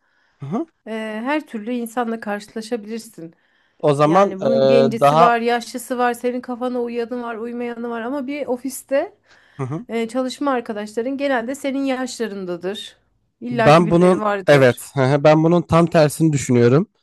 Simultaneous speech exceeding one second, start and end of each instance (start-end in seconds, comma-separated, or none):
4.0-5.4, 13.5-14.9